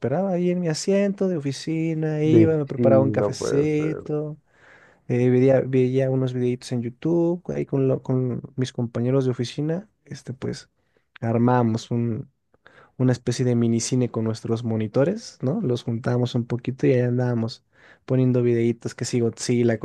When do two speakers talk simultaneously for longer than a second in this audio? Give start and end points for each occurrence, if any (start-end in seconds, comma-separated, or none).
2.2-4.2